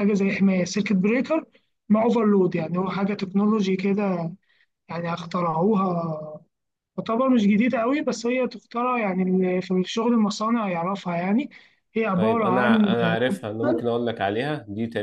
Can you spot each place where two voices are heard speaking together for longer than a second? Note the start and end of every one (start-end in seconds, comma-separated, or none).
12.1-13.3